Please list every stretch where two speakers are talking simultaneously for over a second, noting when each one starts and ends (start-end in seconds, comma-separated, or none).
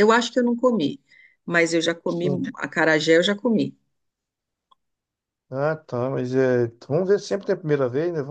none